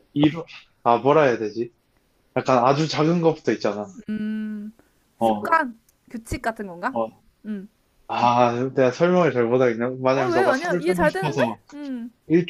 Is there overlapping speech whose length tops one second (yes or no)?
yes